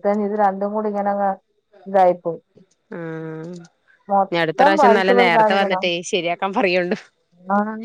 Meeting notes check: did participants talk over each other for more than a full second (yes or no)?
yes